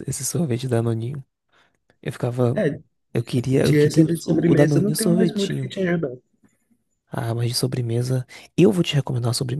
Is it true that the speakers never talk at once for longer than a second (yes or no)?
no